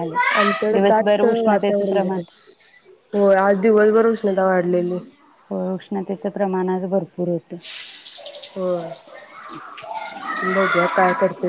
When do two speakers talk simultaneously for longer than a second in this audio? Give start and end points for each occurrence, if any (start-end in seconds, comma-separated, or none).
0.7-2.2